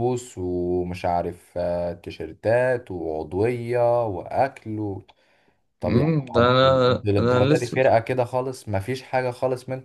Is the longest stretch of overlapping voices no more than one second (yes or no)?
no